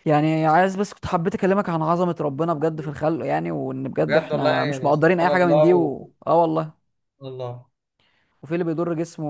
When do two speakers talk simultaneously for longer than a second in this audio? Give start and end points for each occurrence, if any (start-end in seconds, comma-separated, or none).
4.1-6.1